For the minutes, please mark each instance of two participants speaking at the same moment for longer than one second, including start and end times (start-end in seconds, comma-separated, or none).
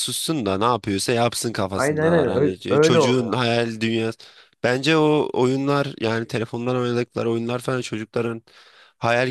1.7-3.4